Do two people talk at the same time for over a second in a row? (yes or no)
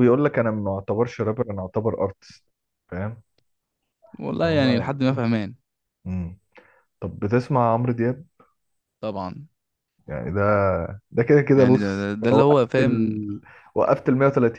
yes